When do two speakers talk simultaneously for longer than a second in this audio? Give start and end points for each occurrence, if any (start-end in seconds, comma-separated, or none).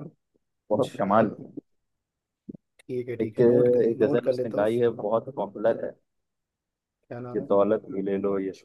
3.2-4.7